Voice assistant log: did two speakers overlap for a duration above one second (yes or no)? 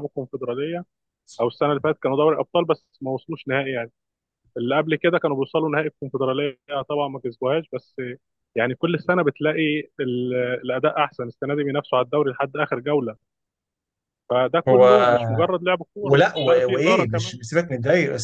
yes